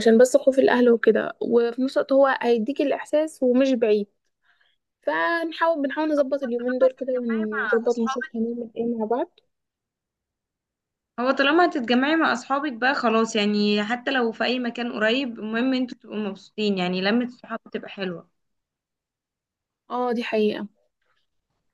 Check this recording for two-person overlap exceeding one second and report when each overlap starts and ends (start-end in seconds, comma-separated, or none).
6.4-8.3